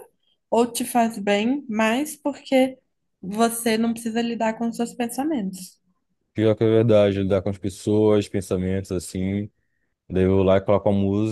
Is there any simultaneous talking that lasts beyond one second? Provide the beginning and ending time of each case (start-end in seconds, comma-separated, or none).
none